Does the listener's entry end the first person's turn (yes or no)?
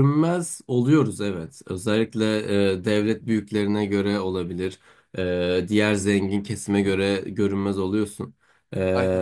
no